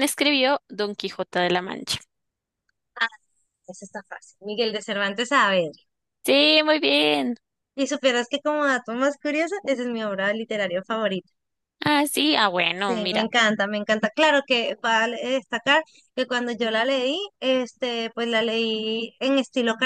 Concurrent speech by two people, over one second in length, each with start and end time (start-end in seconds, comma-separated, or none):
none